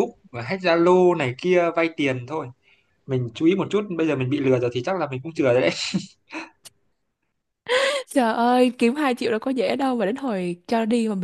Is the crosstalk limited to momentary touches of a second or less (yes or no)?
yes